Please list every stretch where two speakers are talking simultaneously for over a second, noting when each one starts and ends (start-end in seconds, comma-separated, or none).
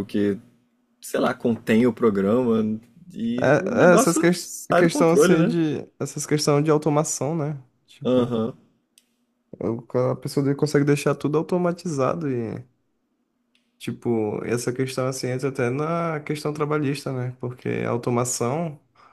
3.4-5.6